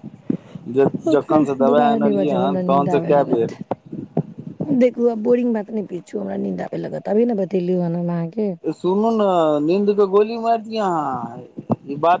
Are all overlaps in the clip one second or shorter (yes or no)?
no